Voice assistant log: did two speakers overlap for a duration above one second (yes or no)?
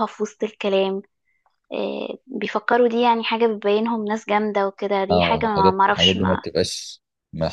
yes